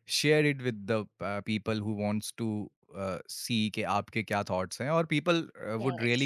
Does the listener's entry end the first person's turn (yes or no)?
no